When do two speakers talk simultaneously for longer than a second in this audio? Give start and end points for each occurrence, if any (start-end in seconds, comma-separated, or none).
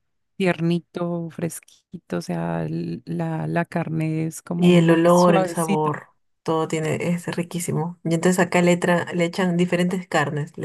4.6-6.0